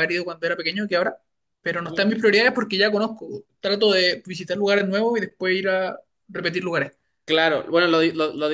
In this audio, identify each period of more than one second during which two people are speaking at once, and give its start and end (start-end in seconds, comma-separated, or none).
none